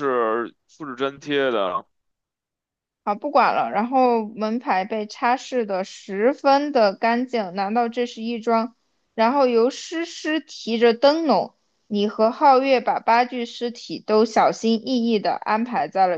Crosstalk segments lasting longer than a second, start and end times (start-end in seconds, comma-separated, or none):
none